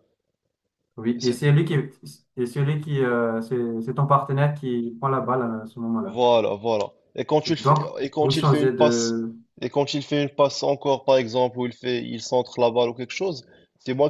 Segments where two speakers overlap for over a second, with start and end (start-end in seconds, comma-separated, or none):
7.6-9.2